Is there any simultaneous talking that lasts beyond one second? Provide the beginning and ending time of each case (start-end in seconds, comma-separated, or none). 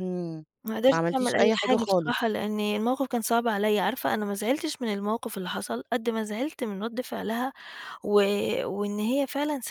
0.9-2.2